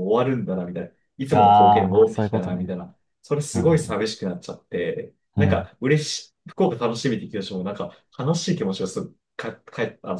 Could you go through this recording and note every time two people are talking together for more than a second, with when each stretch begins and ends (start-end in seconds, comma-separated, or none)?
1.3-2.7